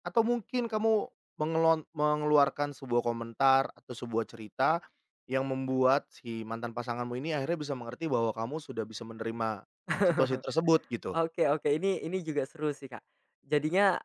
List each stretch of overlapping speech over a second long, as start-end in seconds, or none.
none